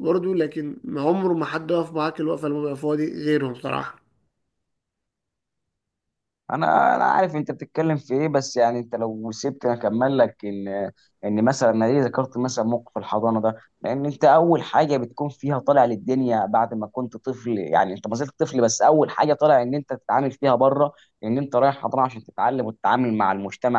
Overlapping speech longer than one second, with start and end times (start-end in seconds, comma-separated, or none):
none